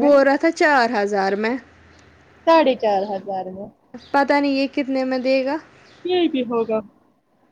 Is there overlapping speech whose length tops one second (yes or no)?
no